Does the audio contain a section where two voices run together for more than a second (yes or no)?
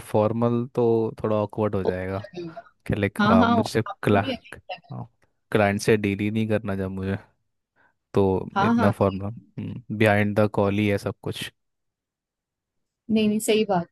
yes